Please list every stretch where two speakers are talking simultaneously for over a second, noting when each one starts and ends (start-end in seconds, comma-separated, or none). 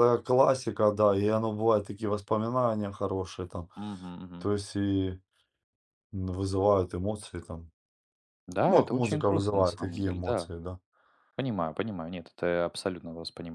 8.7-10.5